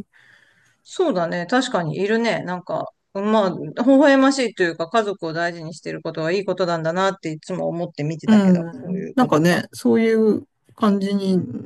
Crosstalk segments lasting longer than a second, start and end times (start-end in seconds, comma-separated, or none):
8.3-9.7